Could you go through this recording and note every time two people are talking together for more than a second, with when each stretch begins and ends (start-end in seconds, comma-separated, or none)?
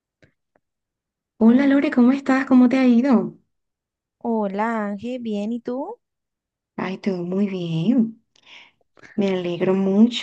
none